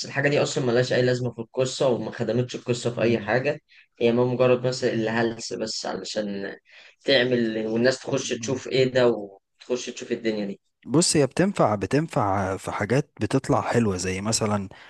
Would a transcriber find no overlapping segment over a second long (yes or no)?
yes